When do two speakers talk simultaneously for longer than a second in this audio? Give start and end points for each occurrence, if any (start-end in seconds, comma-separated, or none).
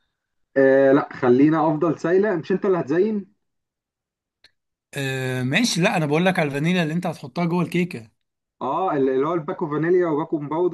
none